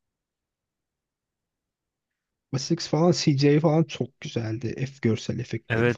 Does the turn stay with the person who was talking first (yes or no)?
no